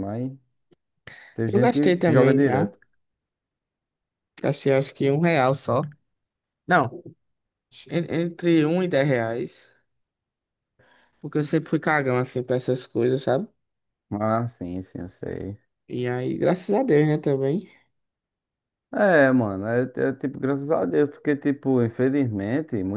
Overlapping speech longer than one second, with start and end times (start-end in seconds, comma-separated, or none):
1.5-2.7